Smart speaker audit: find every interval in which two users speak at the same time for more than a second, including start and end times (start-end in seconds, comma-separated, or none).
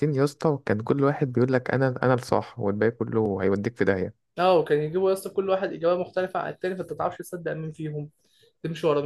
none